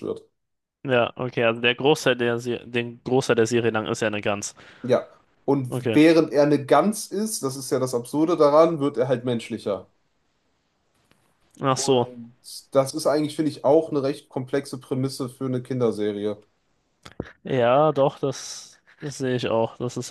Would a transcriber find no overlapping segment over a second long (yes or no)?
yes